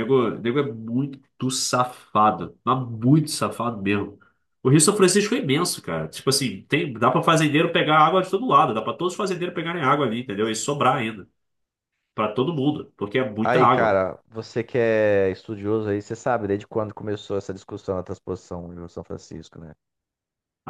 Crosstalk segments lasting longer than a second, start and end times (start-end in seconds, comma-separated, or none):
none